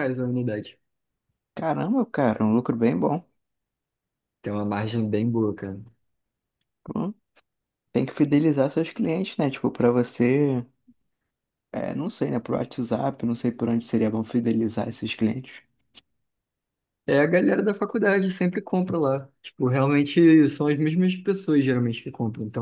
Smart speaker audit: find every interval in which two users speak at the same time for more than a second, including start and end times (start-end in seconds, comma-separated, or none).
none